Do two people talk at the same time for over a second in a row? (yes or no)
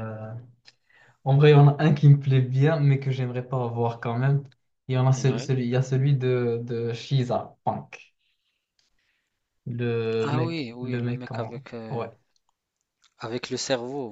yes